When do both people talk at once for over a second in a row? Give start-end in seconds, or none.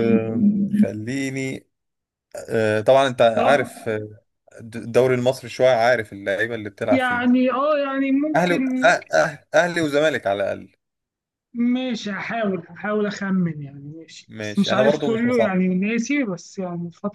14.3-15.6